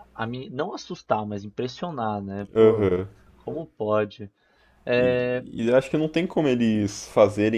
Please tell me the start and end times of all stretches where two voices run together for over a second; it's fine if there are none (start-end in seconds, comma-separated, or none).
none